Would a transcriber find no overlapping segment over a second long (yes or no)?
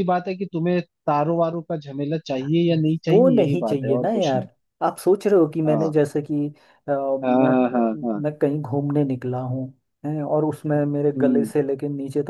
no